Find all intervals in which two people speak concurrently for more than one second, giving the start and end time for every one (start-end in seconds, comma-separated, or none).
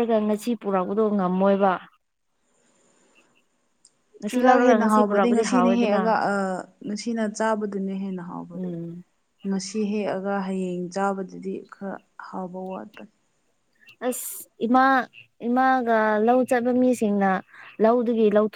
4.3-6.0